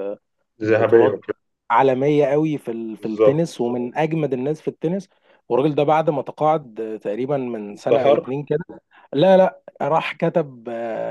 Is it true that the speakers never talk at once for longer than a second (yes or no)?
yes